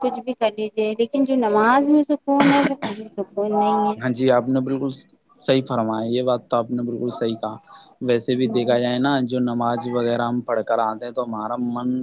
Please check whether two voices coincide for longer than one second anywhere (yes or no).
no